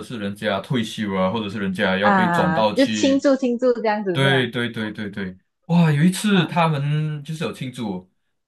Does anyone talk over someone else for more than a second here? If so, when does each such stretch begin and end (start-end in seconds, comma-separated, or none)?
2.0-3.3